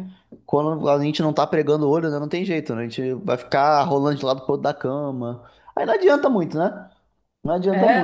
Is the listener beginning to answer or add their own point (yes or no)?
yes